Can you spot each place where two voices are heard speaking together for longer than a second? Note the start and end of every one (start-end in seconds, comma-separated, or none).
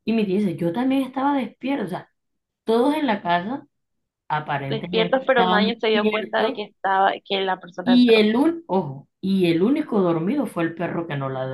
4.7-6.6